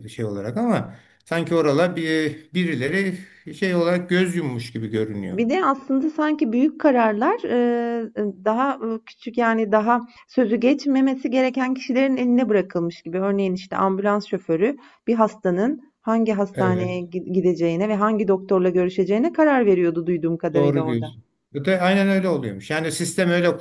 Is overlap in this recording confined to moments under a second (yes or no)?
yes